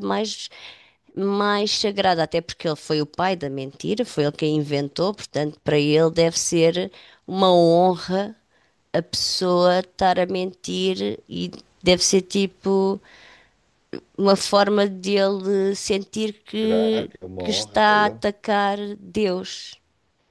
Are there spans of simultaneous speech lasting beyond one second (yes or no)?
yes